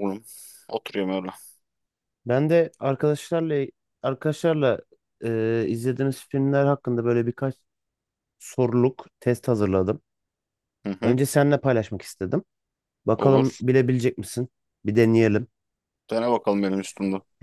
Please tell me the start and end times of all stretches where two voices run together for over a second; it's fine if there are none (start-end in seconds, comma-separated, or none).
none